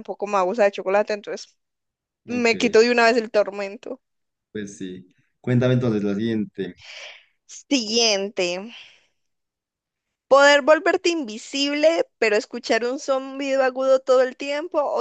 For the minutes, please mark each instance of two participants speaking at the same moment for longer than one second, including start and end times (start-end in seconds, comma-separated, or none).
none